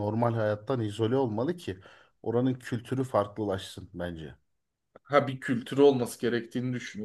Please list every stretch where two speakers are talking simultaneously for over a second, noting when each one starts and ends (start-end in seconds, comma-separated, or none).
none